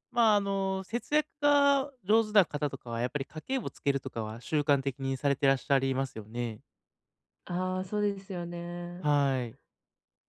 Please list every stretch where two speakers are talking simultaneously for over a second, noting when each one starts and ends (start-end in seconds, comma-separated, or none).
none